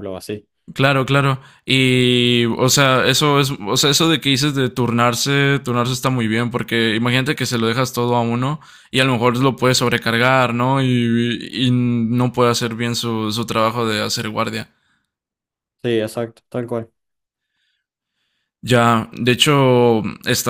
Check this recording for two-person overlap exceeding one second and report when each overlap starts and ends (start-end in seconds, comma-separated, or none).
none